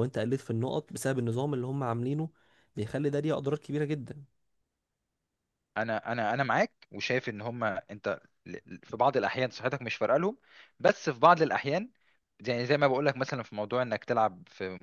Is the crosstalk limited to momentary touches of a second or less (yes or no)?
yes